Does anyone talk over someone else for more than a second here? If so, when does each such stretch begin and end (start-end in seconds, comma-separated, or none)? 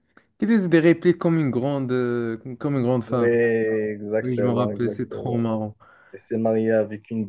4.2-5.5